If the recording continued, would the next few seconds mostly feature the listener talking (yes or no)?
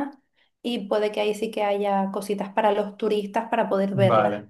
yes